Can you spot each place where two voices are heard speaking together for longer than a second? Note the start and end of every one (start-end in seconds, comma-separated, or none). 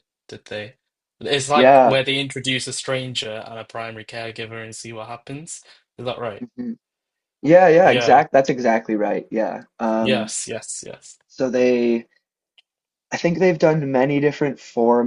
none